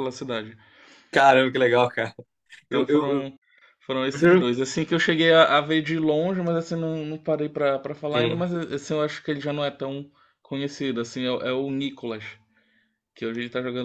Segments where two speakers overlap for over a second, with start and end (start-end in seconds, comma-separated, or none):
none